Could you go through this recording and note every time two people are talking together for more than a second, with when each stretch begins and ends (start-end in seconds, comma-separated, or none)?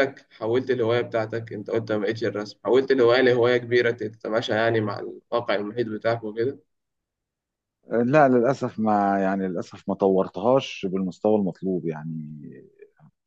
none